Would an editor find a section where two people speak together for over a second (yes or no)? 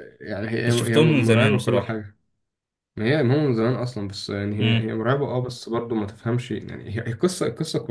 yes